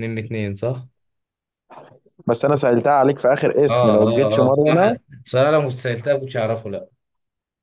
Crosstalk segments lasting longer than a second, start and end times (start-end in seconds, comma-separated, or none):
3.7-5.0